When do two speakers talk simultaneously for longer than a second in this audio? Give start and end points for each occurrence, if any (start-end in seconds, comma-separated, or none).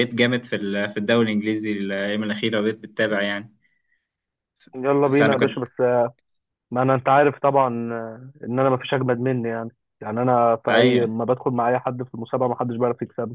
none